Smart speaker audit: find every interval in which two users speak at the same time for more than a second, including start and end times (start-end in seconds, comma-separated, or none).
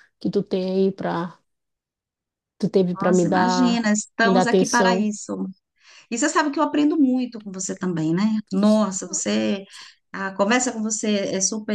2.9-5.1